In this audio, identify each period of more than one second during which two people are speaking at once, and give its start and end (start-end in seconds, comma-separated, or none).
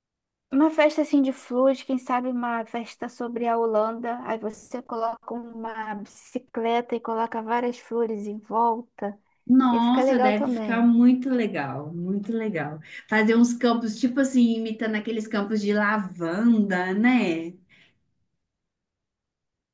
9.7-10.9